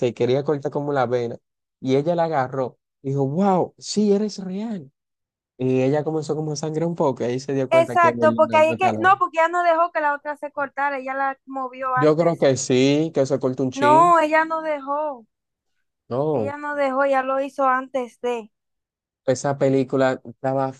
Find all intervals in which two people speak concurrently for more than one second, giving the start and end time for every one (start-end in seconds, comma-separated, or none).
7.7-9.2